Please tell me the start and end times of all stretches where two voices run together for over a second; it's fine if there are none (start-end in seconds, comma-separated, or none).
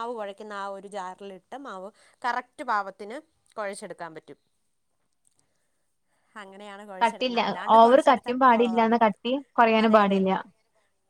7.0-9.0